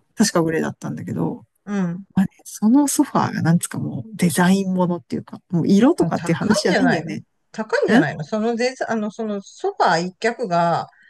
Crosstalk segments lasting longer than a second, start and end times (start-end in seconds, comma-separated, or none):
6.0-7.2